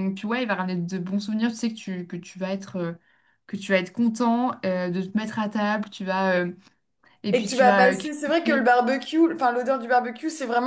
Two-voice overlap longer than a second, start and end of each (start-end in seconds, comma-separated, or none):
7.3-8.7